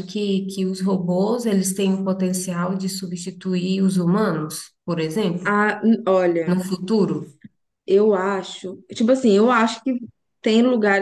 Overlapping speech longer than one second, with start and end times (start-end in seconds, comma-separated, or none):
none